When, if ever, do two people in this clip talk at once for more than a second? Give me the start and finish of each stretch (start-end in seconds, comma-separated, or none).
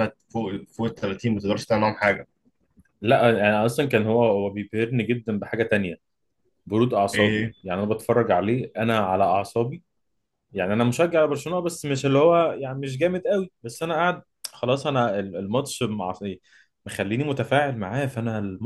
none